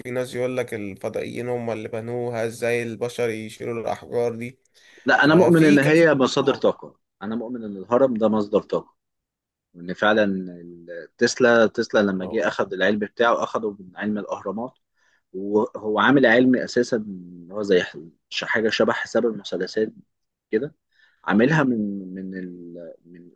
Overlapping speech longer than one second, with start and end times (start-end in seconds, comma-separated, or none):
5.2-6.7